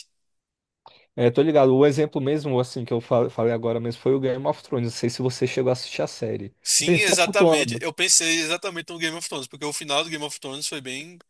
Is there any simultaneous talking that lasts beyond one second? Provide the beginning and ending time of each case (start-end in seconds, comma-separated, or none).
6.6-7.8